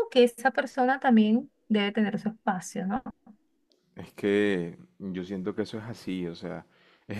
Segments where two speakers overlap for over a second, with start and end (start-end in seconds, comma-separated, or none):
none